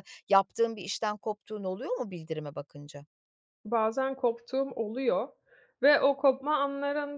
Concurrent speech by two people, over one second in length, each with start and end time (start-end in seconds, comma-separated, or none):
none